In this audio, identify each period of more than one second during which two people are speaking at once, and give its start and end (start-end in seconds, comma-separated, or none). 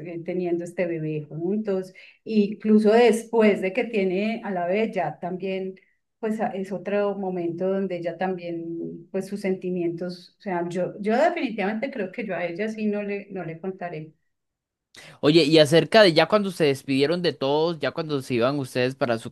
none